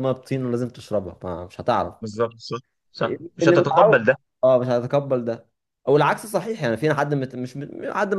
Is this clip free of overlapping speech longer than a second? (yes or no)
yes